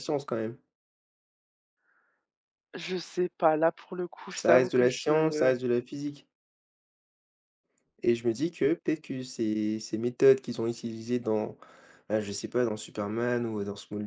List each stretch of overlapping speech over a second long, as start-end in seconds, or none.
4.3-5.5